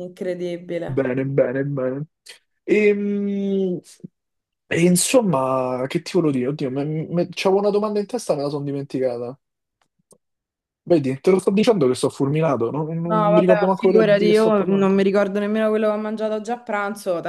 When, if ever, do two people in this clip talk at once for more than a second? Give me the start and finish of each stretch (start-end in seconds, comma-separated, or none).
13.1-15.0